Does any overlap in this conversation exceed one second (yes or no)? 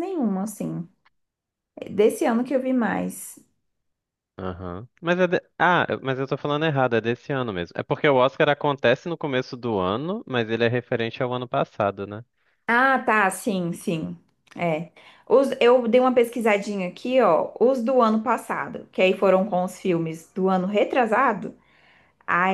no